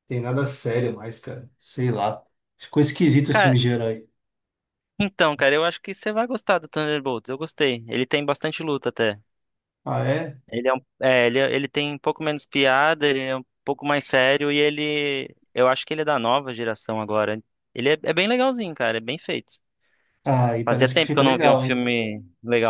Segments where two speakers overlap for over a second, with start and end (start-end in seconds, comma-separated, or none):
20.6-21.9